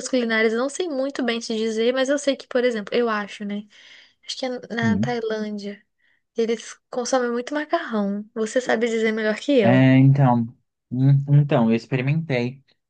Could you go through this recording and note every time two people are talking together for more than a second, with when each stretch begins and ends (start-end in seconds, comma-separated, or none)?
none